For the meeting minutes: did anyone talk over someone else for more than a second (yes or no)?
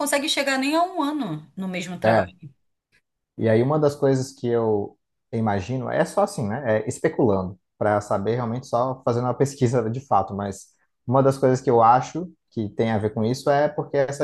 no